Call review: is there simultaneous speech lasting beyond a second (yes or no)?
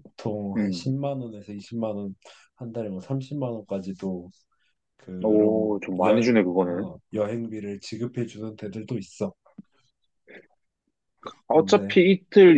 yes